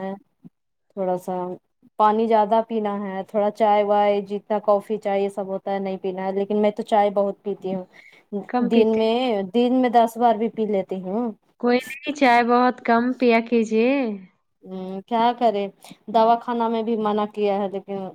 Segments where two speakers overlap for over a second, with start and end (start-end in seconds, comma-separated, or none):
none